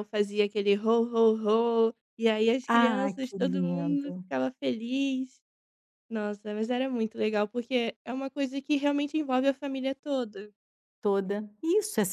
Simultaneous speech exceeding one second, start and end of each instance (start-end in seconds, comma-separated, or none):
2.8-4.2